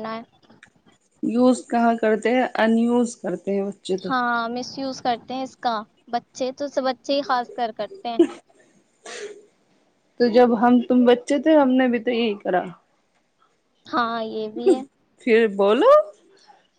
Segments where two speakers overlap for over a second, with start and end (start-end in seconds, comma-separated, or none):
none